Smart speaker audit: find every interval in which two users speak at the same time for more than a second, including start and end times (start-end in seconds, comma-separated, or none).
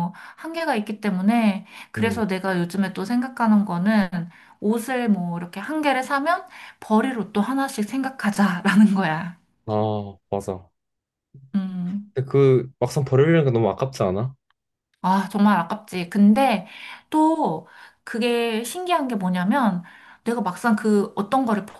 none